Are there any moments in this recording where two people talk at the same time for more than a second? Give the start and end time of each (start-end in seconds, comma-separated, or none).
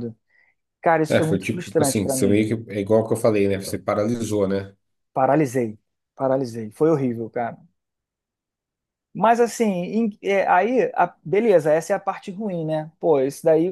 1.1-2.5